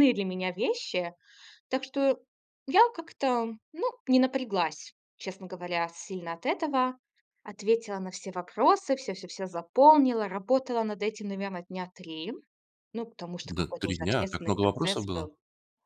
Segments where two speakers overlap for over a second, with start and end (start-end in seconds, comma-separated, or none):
13.4-15.3